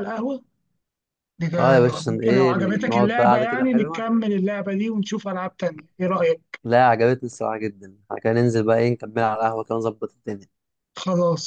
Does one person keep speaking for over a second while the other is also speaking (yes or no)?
yes